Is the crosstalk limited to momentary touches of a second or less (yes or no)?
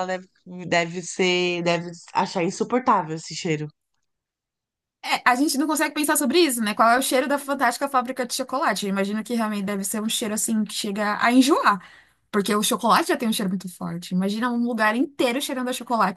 yes